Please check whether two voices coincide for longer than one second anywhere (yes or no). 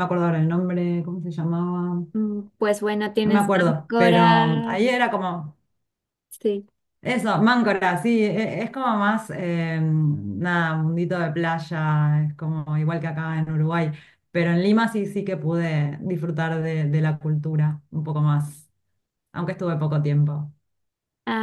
yes